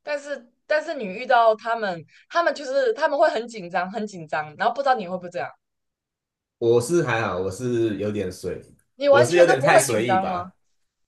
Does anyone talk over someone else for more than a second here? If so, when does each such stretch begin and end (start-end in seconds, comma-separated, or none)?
9.1-10.4